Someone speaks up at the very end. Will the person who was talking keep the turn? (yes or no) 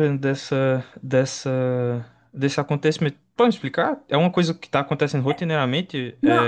no